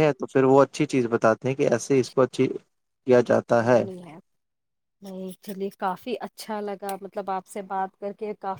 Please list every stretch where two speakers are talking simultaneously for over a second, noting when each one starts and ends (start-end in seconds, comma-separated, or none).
none